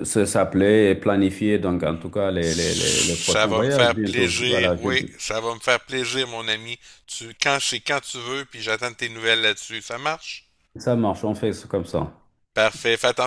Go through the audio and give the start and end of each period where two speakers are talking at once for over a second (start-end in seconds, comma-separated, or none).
2.4-4.9